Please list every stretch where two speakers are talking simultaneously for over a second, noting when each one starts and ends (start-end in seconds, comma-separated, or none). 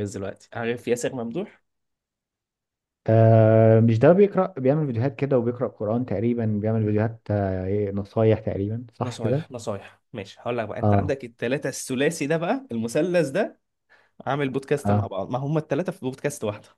none